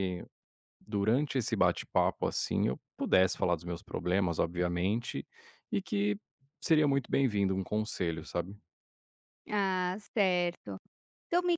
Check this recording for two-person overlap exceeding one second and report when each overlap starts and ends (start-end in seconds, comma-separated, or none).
none